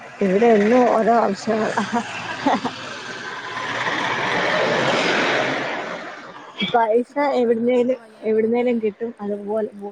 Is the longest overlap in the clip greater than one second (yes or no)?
yes